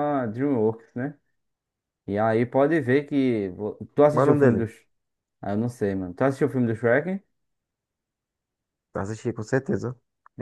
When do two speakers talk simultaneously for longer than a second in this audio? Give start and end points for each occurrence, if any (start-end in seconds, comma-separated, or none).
none